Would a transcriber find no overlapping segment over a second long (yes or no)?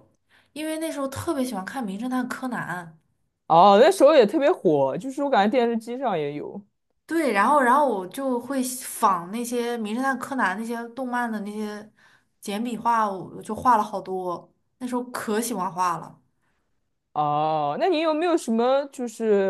yes